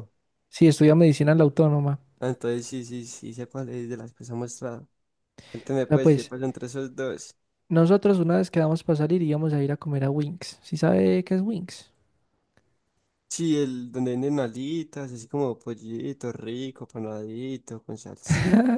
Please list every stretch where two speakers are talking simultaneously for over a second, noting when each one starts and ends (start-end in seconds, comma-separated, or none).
none